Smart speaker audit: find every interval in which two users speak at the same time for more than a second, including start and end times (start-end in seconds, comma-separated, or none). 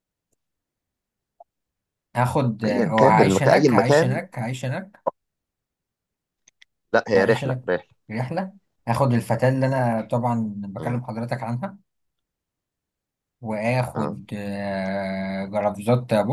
2.6-4.2